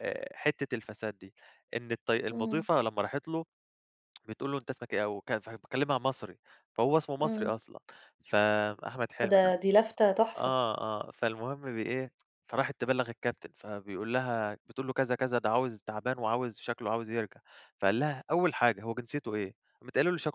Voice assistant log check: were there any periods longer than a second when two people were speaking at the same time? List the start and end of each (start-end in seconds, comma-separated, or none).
none